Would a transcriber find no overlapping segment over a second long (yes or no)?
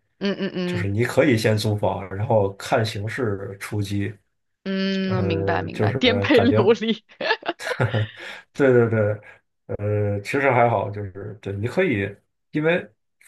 no